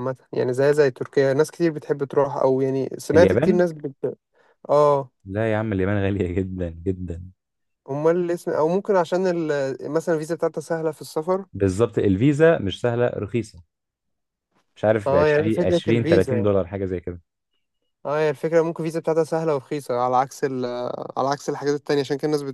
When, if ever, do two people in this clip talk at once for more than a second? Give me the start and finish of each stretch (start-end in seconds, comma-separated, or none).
15.1-16.5